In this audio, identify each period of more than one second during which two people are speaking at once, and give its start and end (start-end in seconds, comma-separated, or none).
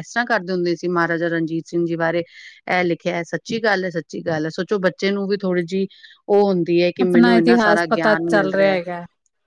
7.0-8.8